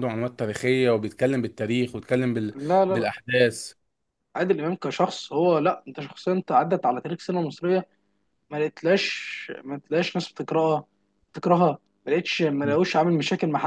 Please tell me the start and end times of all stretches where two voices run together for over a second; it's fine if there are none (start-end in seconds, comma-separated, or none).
none